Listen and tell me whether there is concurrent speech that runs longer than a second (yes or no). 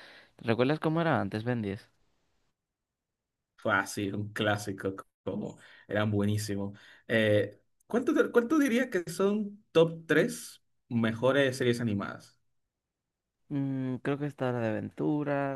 no